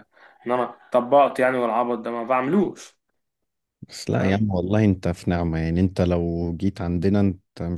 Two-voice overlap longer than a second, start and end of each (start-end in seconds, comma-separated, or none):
none